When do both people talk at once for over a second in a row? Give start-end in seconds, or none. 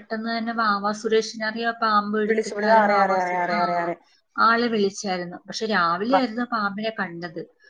2.3-3.8